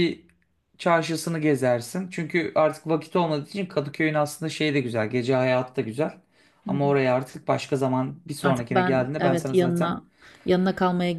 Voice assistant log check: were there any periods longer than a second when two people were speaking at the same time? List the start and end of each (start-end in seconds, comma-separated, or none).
8.4-10.0